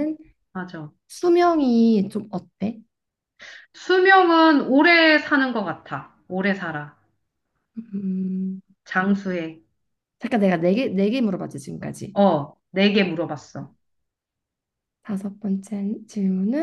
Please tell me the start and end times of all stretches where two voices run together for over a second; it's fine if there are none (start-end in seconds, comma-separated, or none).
none